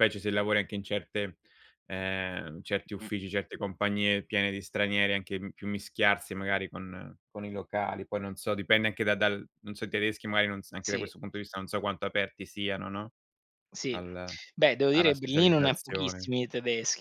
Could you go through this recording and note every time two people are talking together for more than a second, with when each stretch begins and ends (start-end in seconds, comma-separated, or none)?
14.9-16.3